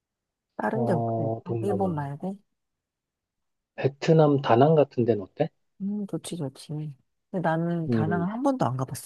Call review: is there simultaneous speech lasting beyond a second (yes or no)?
yes